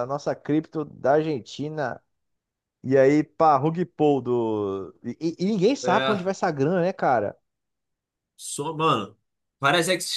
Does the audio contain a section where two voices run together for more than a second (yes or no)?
no